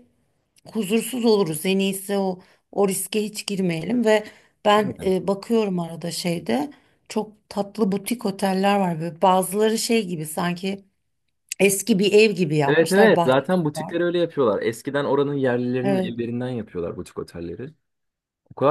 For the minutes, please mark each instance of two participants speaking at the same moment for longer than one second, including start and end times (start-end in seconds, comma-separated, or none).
12.7-14.0